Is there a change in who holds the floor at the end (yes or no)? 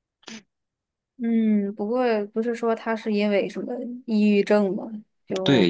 yes